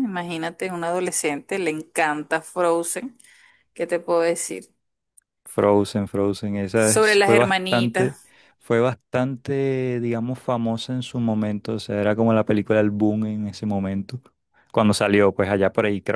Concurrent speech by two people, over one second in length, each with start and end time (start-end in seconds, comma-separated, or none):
6.8-8.2